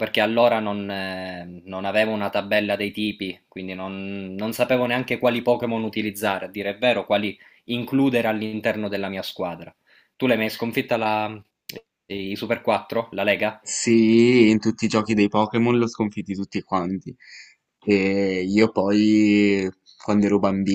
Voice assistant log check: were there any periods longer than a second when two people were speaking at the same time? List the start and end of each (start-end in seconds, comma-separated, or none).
none